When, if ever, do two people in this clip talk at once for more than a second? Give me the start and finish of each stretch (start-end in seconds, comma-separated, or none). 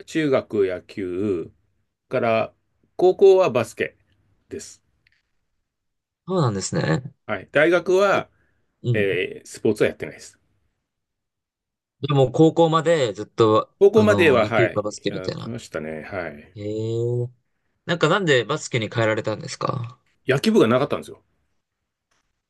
13.8-15.5